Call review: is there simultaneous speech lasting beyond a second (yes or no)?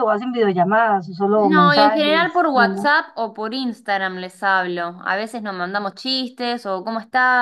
yes